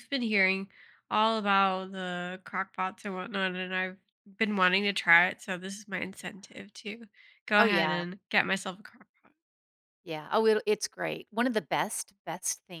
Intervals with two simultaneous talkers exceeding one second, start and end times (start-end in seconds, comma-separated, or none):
none